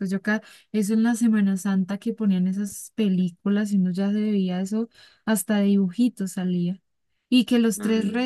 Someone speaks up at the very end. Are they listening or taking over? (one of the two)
listening